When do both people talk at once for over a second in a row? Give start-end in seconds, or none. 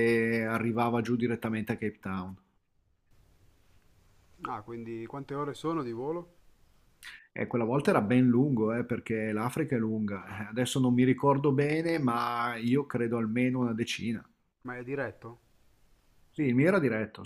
none